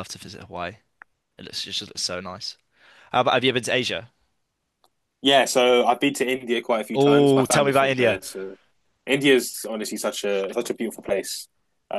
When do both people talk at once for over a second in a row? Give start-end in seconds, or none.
6.9-8.2